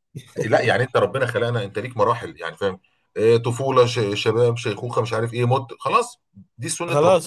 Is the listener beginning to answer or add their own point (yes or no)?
yes